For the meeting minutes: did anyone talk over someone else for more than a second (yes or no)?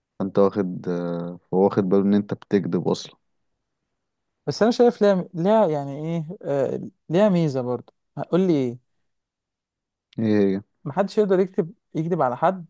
no